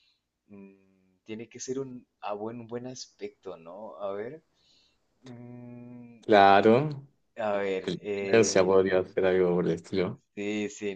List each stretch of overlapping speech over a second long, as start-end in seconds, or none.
7.5-9.2